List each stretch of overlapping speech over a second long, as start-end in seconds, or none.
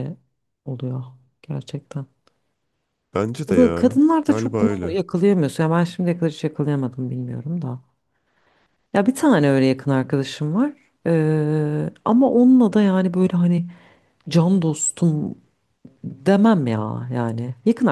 3.5-5.0